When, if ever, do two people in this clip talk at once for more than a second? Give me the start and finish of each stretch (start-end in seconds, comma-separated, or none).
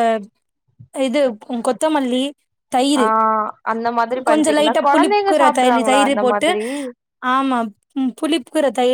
4.3-6.5